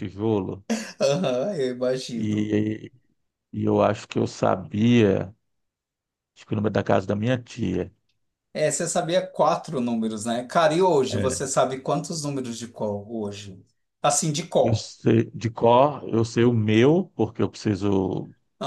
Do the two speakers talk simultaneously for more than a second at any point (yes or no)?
no